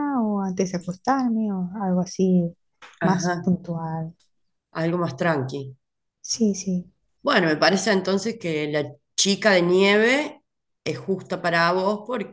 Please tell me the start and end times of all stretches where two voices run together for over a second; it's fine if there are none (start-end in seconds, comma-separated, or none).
none